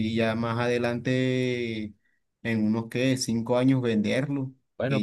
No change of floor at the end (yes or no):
yes